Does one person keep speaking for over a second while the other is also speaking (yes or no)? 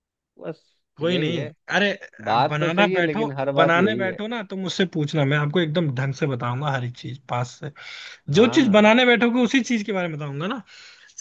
yes